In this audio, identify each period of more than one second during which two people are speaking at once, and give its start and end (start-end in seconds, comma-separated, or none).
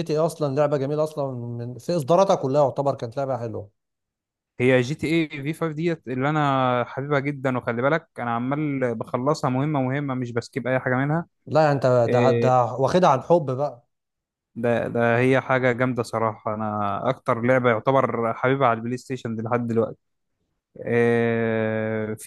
none